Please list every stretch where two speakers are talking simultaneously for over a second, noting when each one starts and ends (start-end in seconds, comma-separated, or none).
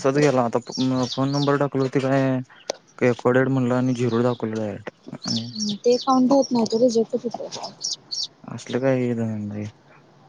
none